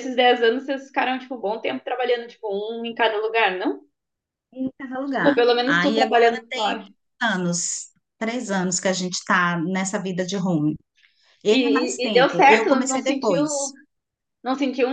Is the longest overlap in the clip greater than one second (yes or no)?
yes